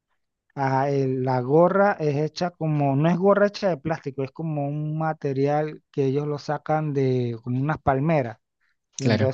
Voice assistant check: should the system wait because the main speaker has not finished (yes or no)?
yes